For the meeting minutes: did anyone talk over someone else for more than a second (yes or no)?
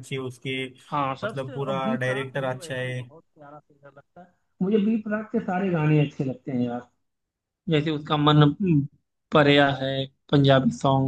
yes